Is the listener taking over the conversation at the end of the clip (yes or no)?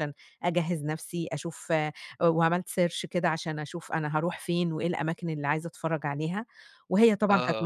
no